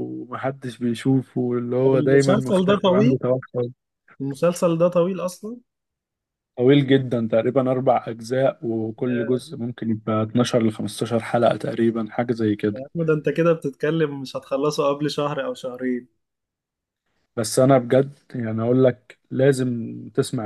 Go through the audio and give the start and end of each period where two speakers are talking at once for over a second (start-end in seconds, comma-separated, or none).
1.8-3.2